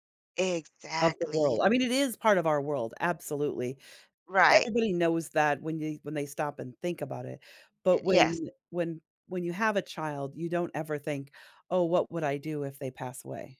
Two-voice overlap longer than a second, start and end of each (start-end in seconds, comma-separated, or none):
none